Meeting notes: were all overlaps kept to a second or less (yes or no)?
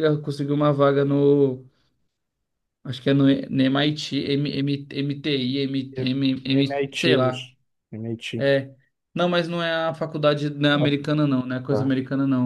no